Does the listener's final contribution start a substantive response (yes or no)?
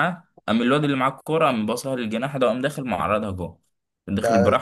no